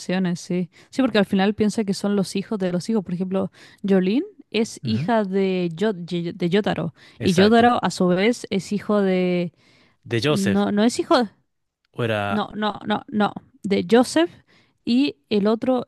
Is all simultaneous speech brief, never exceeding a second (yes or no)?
yes